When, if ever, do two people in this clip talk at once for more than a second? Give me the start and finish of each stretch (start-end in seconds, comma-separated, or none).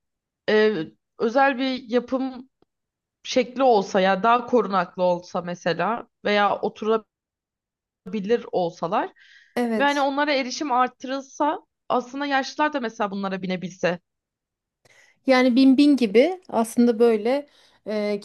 none